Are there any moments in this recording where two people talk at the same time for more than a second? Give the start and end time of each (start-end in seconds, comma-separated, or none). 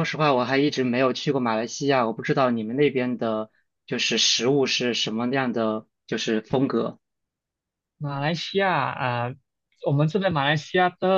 none